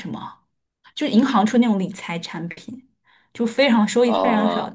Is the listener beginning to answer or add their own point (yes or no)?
no